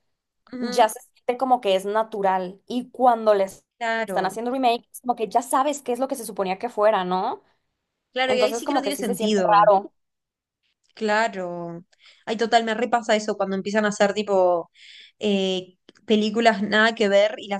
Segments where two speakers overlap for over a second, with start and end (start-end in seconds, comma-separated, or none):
8.3-9.7